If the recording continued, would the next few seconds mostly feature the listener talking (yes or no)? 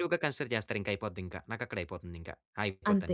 yes